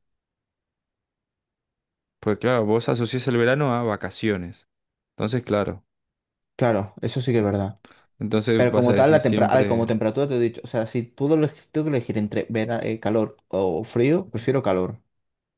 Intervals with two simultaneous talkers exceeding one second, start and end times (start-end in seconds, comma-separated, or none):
8.6-9.9